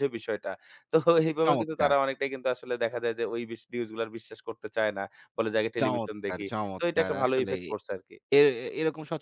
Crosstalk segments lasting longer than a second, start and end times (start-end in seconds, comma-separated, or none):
5.8-7.6